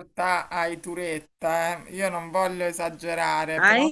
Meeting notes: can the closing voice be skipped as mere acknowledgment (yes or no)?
yes